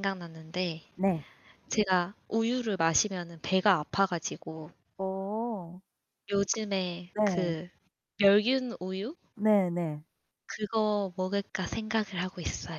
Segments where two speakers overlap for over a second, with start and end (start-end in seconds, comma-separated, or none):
none